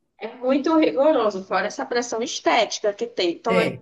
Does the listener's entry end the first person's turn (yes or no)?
no